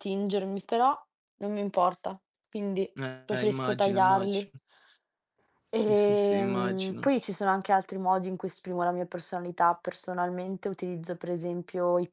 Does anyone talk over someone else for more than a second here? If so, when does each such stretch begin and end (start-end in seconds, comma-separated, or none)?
3.3-4.5, 5.7-7.1